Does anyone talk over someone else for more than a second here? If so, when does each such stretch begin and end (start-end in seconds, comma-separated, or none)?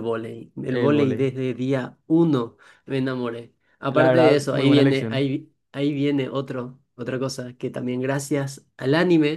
3.9-5.3